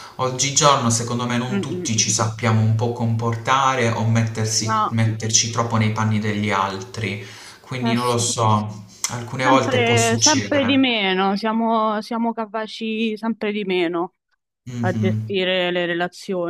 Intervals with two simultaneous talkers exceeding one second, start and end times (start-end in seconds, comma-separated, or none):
9.4-10.8